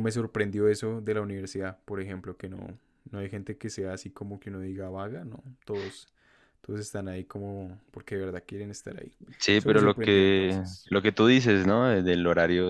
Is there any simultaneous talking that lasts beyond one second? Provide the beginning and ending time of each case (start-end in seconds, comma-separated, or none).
9.6-10.9